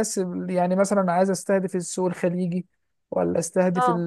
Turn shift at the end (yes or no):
no